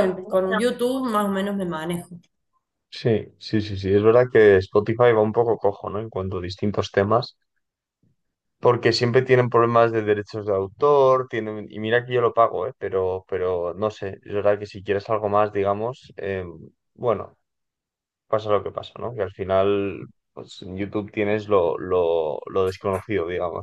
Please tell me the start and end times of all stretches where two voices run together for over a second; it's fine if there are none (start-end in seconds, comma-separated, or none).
none